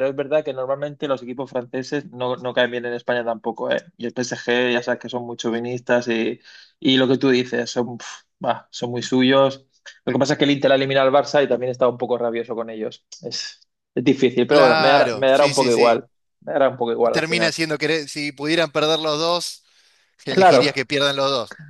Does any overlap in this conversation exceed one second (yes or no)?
yes